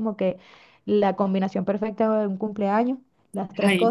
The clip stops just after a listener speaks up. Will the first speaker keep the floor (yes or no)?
yes